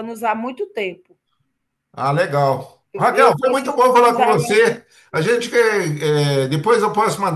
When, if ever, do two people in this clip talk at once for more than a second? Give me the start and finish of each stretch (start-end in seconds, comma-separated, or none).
2.9-4.8